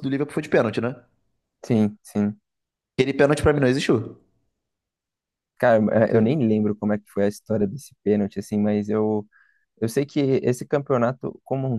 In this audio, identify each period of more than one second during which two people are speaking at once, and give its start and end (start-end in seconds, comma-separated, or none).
none